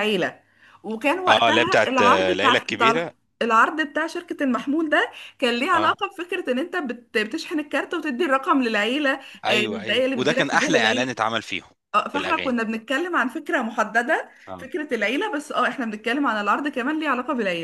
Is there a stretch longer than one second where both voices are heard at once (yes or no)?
yes